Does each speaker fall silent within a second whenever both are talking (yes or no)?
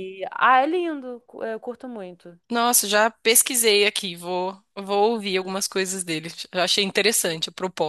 yes